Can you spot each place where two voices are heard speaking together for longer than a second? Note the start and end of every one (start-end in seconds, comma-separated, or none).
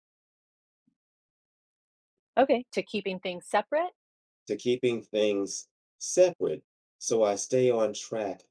none